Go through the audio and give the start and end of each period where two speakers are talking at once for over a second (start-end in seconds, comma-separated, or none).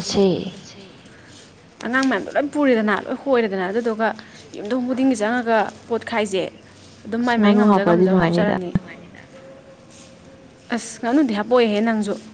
7.2-8.6